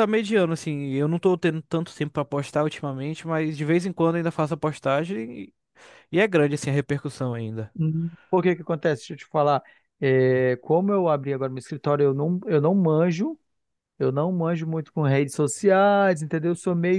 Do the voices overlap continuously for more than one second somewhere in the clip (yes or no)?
no